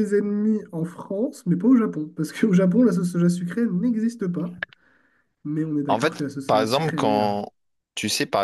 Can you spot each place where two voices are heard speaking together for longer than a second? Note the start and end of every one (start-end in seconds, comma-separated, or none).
5.9-7.3